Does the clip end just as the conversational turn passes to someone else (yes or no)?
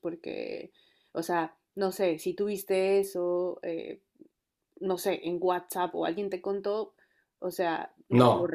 no